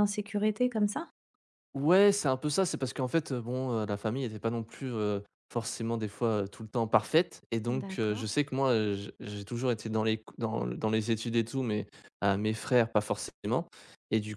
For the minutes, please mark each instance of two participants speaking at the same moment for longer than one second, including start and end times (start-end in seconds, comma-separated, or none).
none